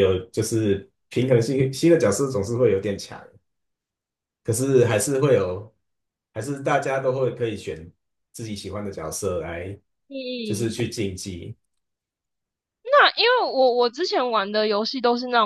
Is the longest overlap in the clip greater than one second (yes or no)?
no